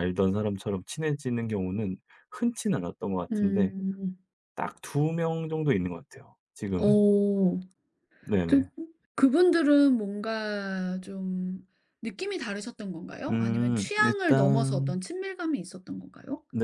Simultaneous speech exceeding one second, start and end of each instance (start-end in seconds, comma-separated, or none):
13.3-15.0